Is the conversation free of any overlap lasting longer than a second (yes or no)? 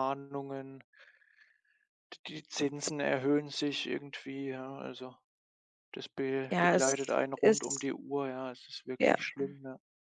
no